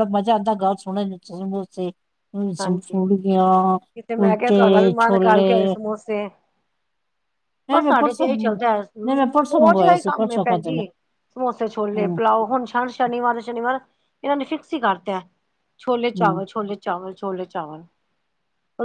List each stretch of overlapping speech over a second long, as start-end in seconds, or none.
4.2-5.7, 7.7-10.8